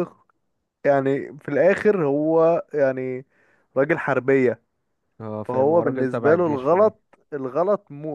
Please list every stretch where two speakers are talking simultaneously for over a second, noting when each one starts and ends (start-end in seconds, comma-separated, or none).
5.4-6.9